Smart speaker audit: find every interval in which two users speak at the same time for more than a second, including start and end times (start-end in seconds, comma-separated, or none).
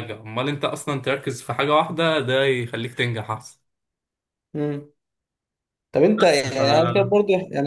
none